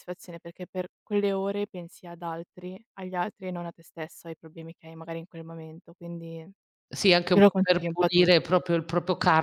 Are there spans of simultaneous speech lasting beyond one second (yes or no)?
yes